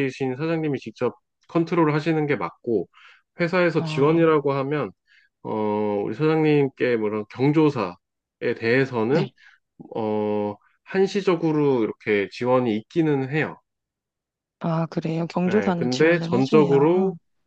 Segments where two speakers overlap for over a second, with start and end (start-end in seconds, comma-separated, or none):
15.5-16.9